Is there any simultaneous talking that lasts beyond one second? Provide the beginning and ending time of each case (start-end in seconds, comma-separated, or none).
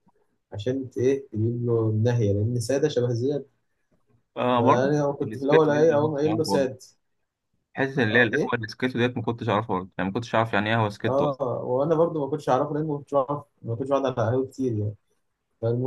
4.5-6.7